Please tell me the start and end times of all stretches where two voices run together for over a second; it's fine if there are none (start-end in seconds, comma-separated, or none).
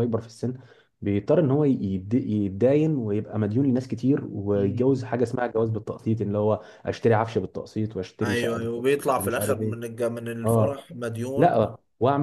8.2-9.8